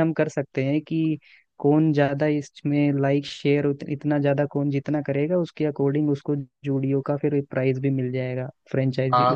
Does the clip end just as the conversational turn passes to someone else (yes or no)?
yes